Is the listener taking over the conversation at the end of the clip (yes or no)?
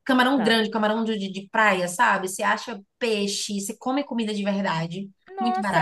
yes